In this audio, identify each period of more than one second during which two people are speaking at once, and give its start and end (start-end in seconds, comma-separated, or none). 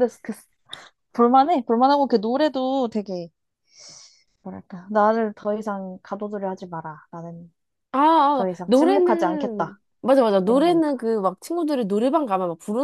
8.3-9.8